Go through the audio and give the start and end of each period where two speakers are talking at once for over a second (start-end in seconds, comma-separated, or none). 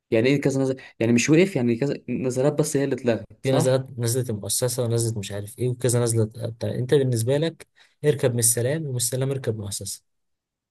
none